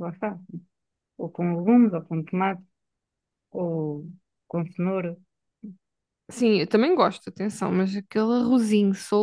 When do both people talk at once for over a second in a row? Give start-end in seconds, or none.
none